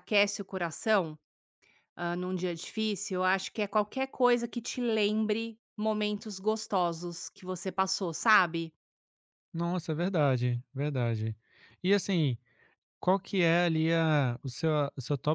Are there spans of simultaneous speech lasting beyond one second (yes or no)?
no